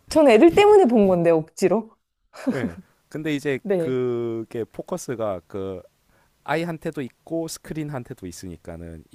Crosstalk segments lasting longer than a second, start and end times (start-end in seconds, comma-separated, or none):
none